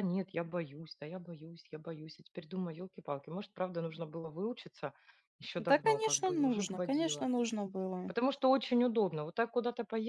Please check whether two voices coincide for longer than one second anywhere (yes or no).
yes